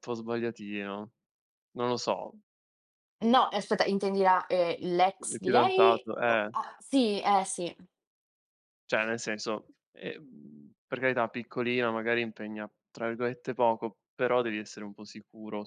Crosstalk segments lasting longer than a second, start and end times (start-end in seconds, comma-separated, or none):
5.2-6.5